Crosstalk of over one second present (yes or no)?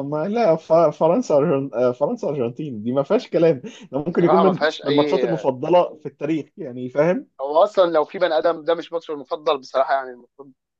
yes